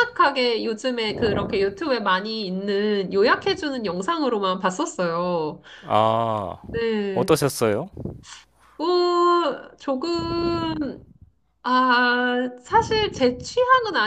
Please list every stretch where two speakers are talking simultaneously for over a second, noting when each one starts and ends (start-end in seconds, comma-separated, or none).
none